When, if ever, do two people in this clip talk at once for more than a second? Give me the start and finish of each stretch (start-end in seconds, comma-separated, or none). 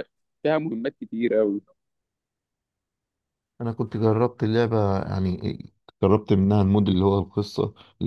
none